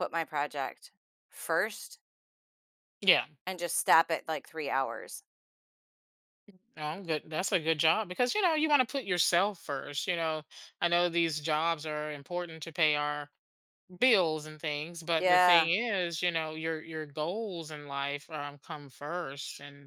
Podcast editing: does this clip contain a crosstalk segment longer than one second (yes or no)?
no